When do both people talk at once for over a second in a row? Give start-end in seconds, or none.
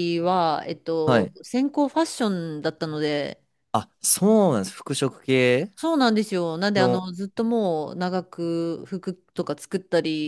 none